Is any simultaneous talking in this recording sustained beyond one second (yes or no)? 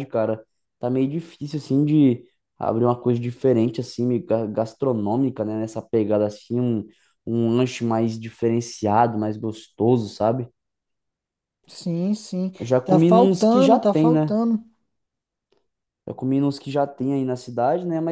yes